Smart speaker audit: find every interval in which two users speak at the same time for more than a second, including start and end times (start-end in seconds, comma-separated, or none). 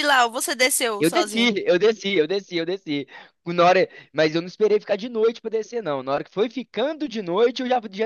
none